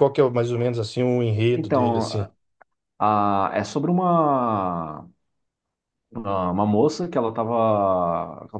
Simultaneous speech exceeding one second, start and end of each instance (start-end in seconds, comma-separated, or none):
none